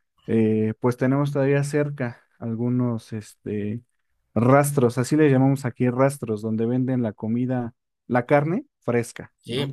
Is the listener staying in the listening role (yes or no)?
no